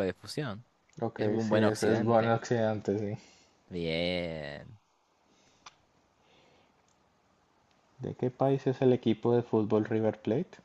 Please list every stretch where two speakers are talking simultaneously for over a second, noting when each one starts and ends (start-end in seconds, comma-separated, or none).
1.2-2.4